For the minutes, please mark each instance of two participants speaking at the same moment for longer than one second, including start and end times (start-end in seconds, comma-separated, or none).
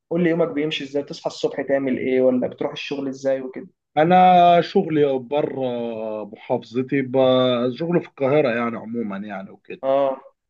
none